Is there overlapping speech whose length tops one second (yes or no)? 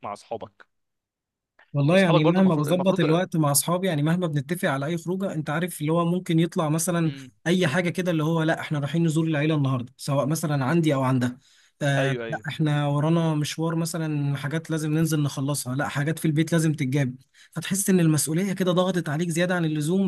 yes